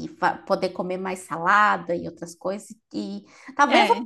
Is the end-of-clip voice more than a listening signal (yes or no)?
no